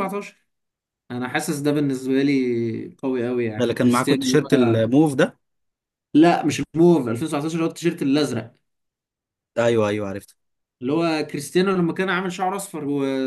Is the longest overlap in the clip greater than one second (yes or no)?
yes